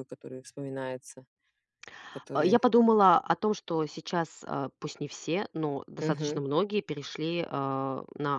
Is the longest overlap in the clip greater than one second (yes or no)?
no